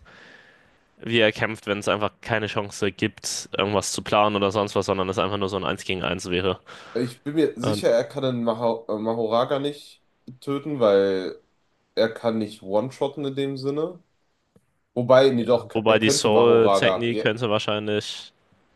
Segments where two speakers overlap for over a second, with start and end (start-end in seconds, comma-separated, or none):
15.2-17.2